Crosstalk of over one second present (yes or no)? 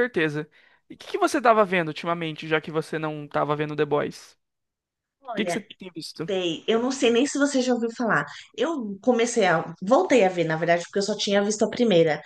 no